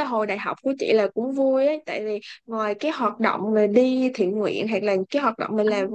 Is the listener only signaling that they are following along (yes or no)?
yes